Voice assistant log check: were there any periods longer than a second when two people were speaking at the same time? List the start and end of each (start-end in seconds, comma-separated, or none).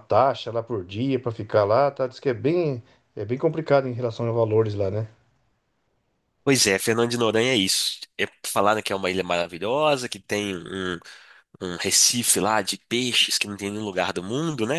none